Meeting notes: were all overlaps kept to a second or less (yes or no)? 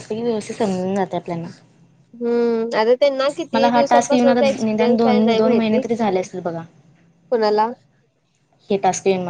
no